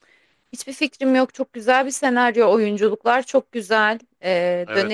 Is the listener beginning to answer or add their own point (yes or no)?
no